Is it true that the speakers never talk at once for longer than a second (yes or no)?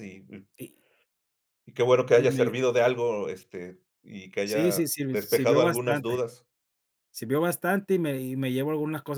no